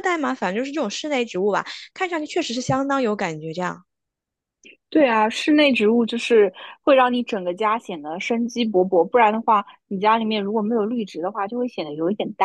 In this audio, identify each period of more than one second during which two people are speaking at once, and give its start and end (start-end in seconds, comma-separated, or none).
none